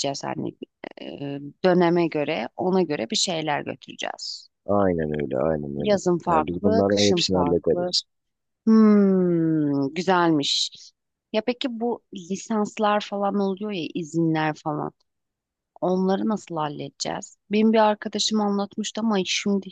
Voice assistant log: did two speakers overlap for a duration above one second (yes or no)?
yes